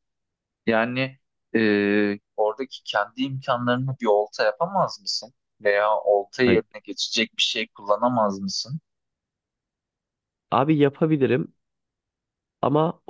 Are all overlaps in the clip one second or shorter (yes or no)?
yes